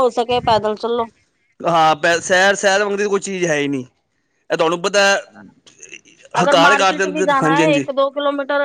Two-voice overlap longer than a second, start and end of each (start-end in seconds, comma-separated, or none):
6.4-7.8